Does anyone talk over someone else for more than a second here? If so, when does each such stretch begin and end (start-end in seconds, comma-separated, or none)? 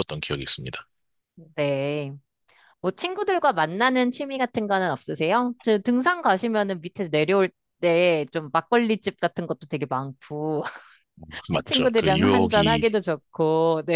11.6-12.8